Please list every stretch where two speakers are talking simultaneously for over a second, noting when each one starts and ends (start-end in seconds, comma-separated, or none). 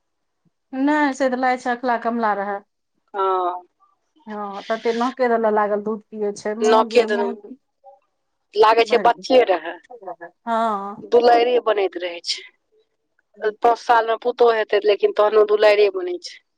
none